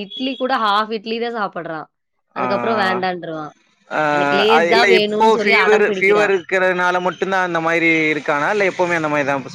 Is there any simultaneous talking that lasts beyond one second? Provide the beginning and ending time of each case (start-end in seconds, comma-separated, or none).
4.5-6.3